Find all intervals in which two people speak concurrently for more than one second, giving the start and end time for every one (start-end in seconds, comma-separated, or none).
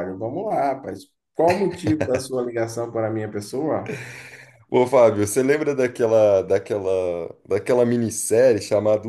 none